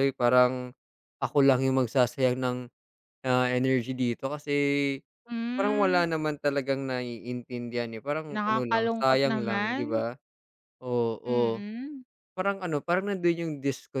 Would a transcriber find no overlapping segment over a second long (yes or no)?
no